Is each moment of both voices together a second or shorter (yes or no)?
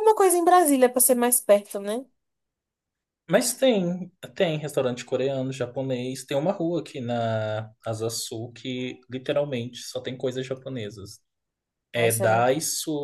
yes